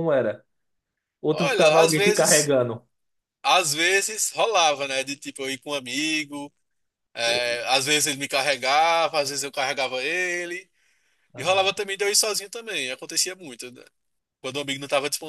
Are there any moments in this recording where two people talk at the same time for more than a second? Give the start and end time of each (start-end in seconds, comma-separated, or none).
1.3-2.5